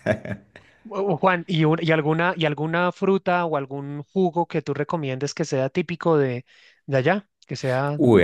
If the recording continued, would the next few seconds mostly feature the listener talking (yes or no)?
yes